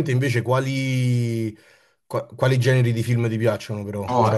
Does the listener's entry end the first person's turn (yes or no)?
yes